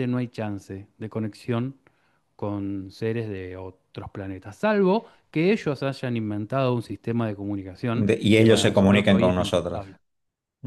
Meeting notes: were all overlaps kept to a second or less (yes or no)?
no